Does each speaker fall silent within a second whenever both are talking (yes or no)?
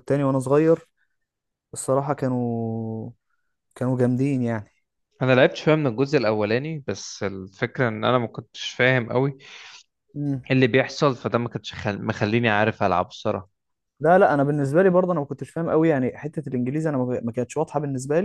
yes